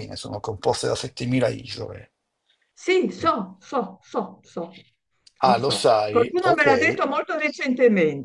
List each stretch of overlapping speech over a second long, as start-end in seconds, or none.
5.4-6.7